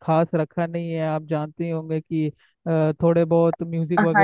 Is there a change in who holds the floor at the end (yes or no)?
yes